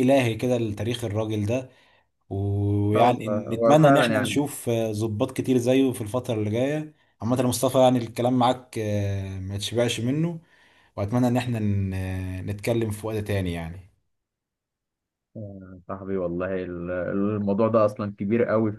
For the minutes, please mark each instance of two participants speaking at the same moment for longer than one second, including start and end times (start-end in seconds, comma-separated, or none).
3.0-4.4